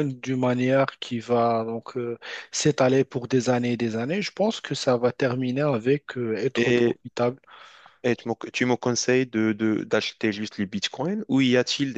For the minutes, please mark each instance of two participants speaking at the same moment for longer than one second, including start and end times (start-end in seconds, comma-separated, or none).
none